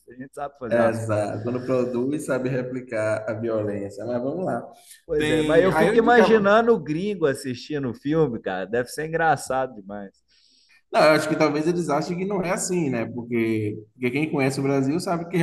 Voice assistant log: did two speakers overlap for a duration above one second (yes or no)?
yes